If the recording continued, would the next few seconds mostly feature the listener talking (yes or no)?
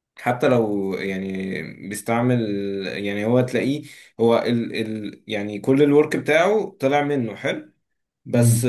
no